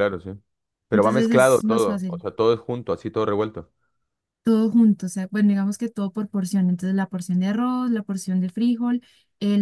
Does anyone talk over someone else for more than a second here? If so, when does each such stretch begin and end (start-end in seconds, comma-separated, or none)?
0.9-2.2